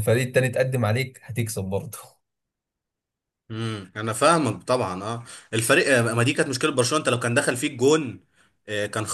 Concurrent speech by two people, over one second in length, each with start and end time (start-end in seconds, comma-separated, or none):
none